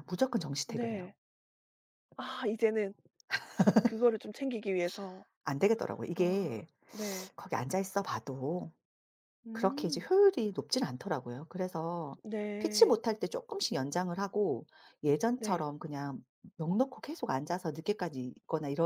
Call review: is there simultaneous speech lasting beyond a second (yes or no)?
no